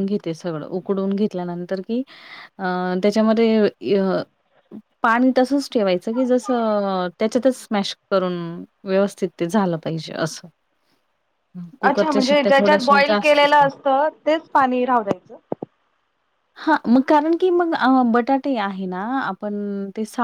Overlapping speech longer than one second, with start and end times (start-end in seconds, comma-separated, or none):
11.9-13.6